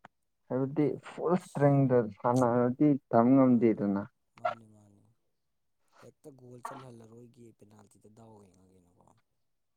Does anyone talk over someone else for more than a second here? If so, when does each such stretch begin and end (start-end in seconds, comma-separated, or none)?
none